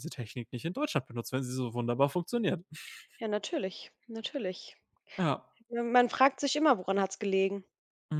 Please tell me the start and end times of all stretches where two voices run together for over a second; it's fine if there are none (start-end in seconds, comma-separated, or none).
none